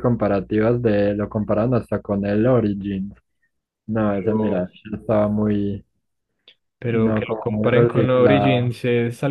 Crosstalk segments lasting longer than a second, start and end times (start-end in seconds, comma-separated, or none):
6.9-8.8